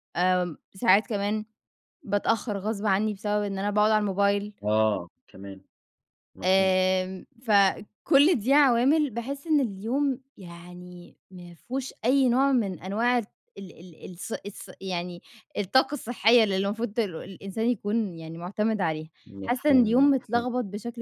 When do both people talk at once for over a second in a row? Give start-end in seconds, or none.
19.2-20.4